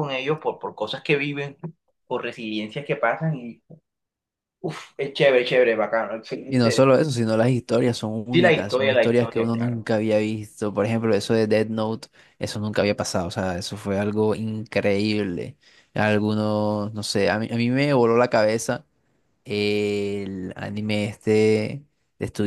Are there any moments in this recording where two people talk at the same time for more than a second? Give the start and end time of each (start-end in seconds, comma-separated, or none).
8.3-9.9